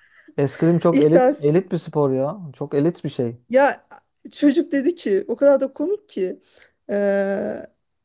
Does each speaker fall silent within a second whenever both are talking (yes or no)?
yes